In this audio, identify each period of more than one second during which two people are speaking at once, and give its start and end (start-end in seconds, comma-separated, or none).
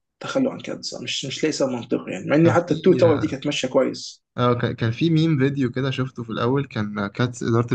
none